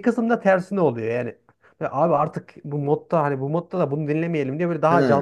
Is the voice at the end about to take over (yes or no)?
no